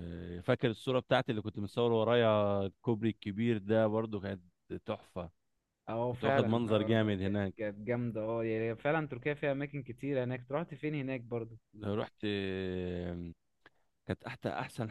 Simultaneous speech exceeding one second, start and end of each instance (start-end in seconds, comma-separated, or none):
6.1-7.5